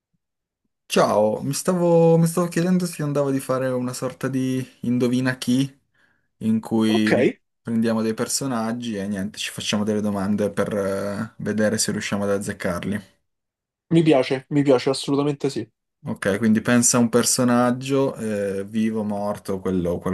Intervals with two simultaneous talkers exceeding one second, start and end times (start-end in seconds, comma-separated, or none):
none